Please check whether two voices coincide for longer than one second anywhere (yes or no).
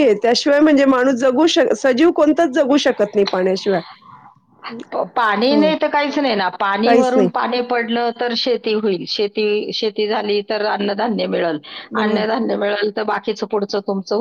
no